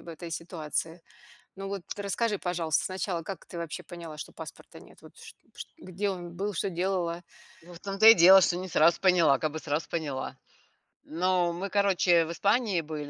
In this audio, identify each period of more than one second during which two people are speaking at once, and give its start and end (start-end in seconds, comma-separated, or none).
none